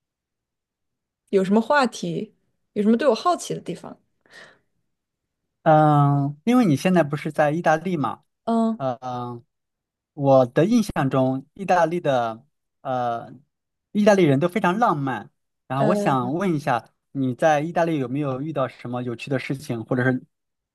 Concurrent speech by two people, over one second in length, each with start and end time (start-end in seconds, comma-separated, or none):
none